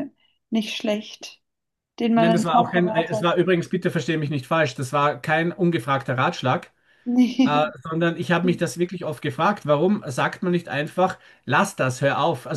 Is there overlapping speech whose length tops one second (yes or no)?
yes